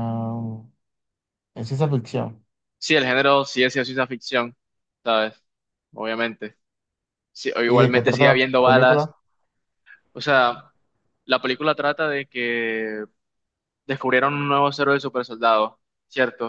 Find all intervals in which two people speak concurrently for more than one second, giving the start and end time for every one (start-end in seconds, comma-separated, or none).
7.7-9.1